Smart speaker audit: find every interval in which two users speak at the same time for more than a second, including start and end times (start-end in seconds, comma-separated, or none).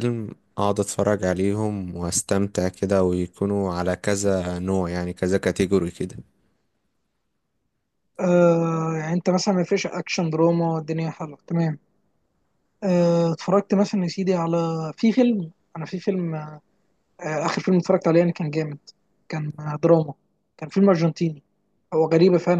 none